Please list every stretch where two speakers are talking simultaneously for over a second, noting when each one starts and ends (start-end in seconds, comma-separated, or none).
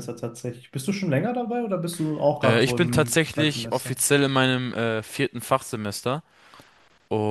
2.4-4.0